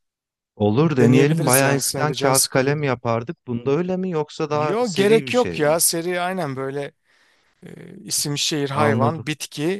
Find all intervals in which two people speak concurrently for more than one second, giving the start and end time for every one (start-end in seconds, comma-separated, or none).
0.8-2.8, 4.5-5.8